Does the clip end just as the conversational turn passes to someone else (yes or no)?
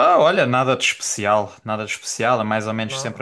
no